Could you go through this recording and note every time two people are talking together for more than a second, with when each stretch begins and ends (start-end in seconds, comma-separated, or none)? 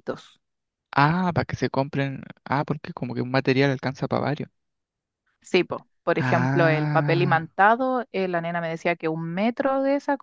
6.2-7.5